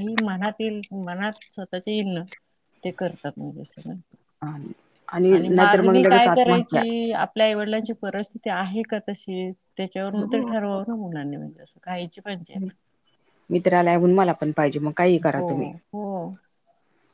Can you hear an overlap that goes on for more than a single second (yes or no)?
yes